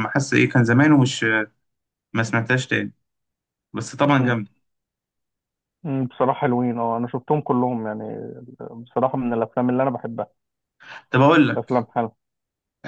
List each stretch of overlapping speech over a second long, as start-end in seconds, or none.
none